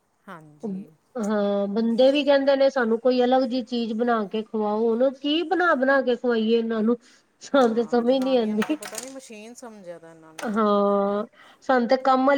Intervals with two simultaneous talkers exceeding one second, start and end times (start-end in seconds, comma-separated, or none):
7.5-8.8